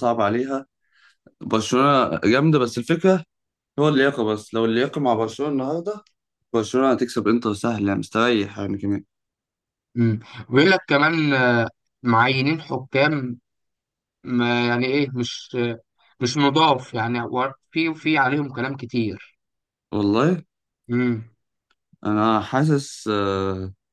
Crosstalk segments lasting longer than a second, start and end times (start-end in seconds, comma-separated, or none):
none